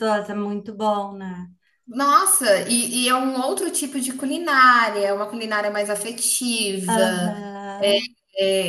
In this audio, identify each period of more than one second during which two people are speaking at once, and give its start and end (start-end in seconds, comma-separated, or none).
none